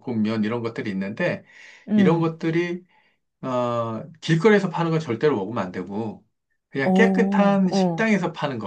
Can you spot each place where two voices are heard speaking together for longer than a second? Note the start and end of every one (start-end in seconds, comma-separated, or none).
6.8-8.1